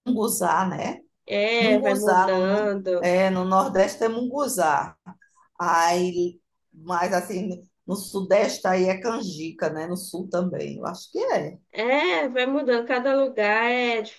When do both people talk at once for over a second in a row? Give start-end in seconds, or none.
1.6-3.1